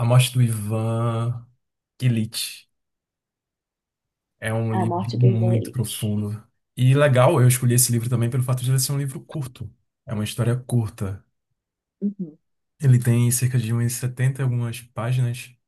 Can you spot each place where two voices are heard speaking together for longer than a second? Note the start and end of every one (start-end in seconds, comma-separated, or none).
4.7-6.1